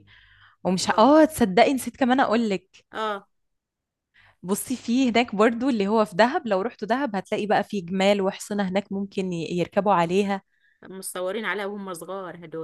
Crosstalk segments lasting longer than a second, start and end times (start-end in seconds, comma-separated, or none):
none